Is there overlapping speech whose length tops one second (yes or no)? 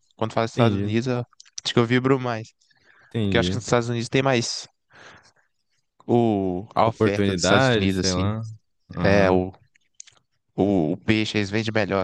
yes